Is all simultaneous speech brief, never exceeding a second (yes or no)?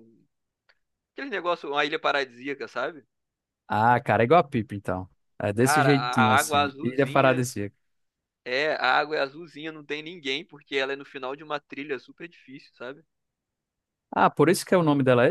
no